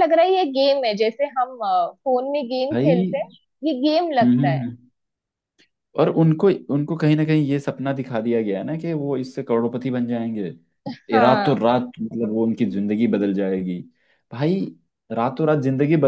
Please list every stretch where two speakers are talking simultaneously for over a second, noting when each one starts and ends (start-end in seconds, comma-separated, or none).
none